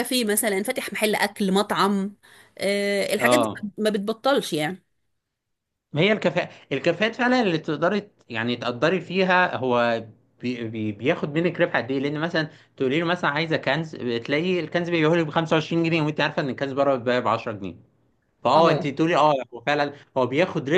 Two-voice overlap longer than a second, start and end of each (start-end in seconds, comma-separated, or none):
none